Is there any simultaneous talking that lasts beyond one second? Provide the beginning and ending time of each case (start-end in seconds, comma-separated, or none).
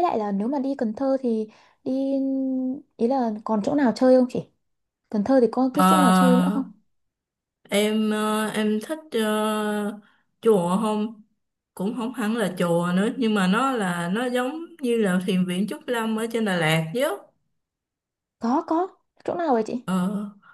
none